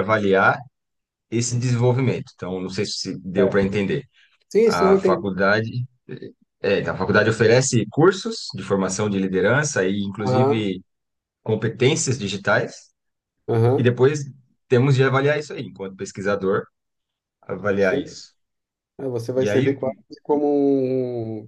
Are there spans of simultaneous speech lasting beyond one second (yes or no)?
no